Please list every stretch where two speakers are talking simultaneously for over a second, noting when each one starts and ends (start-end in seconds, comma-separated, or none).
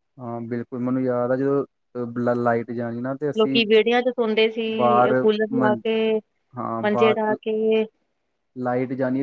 none